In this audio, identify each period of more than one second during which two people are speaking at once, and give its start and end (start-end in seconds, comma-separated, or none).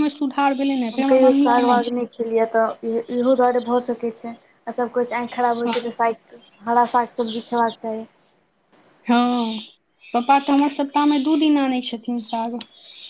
none